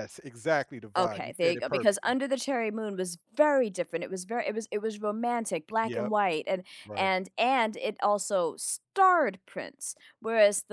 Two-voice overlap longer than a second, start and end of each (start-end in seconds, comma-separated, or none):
0.9-2.2